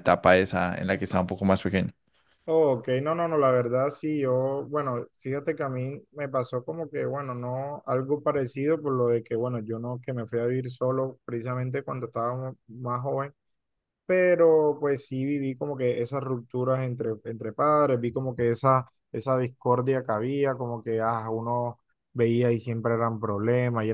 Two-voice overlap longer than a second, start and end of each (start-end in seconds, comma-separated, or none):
none